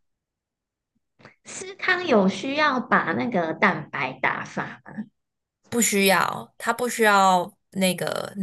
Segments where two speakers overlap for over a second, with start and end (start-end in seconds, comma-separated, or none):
none